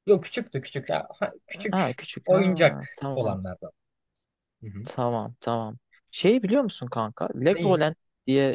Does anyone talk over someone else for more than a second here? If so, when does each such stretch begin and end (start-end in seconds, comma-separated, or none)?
1.7-3.4